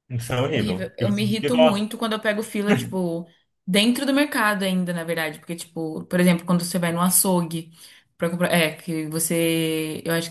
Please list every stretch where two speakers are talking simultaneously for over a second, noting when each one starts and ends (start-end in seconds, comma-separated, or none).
0.5-1.9